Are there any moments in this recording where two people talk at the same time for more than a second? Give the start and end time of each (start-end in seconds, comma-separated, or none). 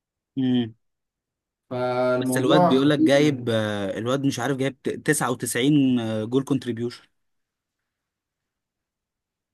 2.1-3.5